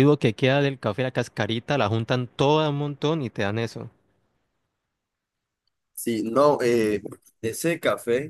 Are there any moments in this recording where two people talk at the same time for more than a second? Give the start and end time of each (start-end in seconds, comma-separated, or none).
none